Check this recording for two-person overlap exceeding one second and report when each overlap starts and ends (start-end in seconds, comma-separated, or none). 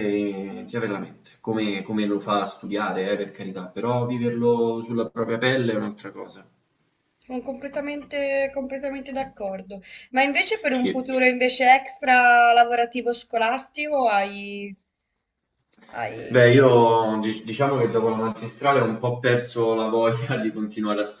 none